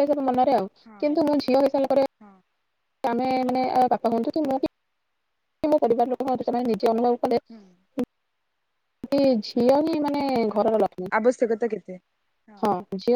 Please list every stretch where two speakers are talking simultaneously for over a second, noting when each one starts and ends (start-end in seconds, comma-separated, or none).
none